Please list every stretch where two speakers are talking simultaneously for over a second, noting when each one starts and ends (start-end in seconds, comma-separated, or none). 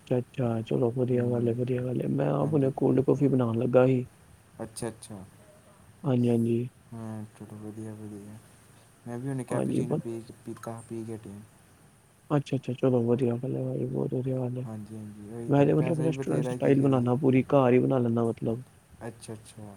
15.5-17.4